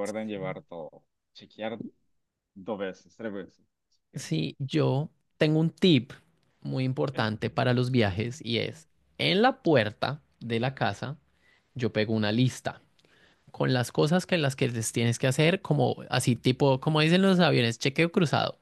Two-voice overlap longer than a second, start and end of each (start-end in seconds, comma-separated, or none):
none